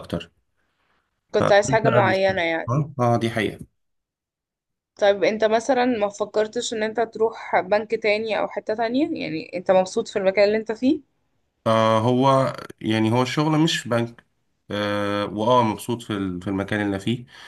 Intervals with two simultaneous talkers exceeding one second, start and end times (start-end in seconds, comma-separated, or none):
1.4-2.7